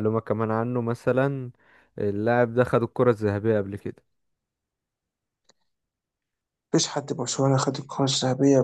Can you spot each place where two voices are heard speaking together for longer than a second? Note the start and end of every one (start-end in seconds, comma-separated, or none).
none